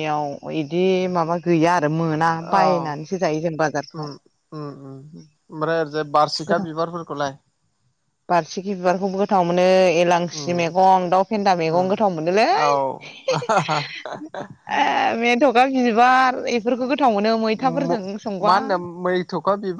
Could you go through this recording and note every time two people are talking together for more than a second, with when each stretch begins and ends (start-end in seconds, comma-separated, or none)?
none